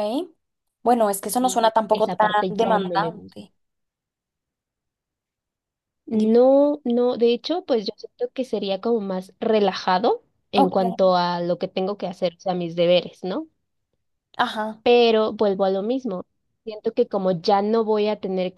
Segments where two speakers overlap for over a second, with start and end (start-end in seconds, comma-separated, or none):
1.4-3.4